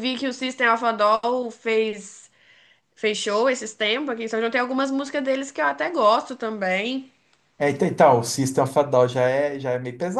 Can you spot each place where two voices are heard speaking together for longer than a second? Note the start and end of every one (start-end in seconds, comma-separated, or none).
none